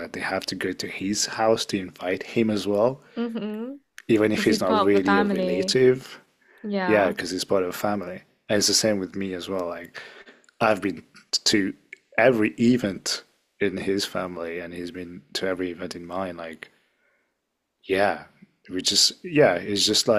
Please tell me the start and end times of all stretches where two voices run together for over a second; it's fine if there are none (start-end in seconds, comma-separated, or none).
4.3-5.8